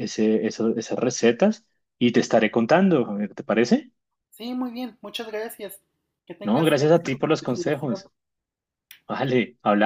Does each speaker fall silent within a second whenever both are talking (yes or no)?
no